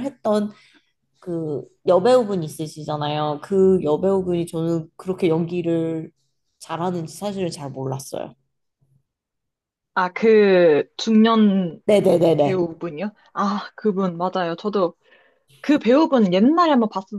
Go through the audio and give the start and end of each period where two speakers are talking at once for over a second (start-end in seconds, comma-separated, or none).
none